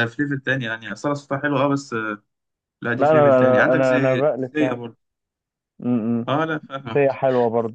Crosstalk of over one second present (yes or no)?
yes